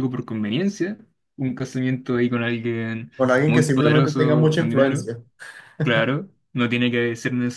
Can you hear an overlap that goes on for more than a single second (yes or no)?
yes